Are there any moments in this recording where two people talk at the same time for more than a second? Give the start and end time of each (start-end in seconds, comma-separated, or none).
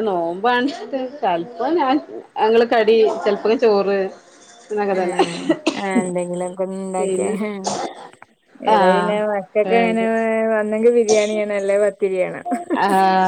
none